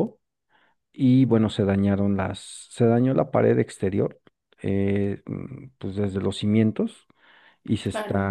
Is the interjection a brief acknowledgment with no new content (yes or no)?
yes